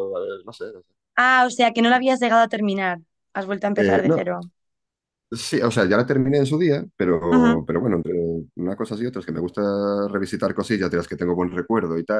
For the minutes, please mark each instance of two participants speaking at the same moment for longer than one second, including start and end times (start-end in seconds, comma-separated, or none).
none